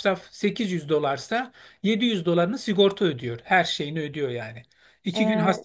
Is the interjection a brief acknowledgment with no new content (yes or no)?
yes